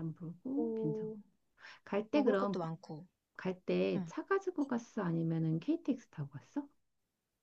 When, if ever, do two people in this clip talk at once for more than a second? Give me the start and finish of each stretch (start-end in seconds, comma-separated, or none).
none